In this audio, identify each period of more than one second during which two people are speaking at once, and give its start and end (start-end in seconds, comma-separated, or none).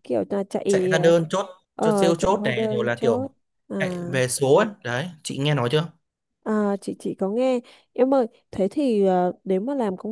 1.8-3.3